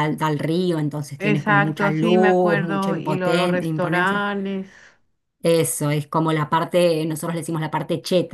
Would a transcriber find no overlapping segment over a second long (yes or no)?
no